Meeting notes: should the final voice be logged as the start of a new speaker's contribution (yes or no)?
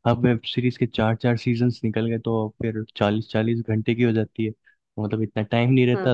no